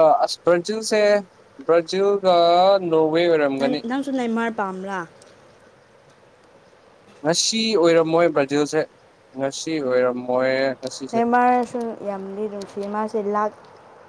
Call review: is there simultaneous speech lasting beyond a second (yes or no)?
no